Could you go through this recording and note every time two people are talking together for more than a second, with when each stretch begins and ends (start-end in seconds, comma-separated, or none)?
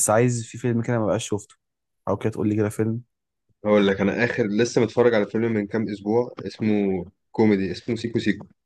none